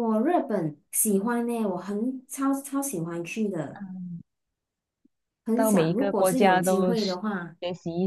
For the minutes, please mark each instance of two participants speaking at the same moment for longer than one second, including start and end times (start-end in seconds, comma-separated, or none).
5.5-7.1